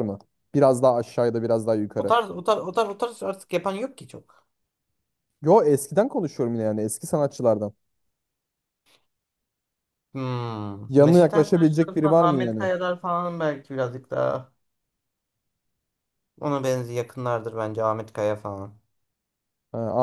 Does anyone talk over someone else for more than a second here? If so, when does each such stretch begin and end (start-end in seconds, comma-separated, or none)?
10.9-12.7